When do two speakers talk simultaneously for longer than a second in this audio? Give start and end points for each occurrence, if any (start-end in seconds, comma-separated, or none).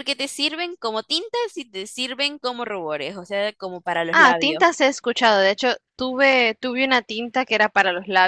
none